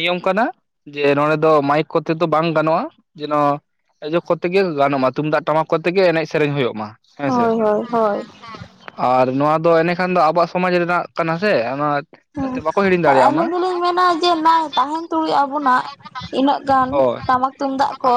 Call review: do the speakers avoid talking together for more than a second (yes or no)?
yes